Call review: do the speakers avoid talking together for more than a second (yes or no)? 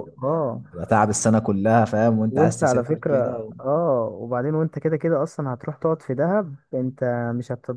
no